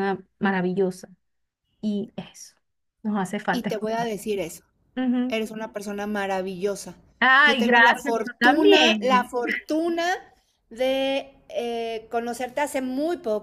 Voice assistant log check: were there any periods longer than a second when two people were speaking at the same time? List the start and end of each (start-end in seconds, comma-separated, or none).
7.4-9.3